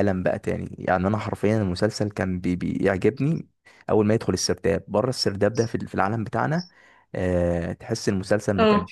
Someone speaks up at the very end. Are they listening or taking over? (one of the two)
listening